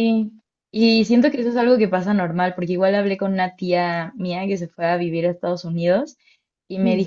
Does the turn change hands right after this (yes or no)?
no